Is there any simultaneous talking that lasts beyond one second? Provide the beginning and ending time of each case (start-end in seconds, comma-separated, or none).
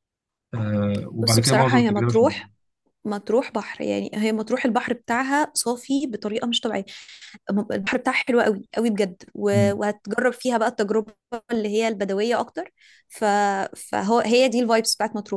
1.2-2.5